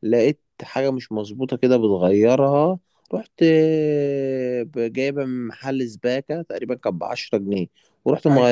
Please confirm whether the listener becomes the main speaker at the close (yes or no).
no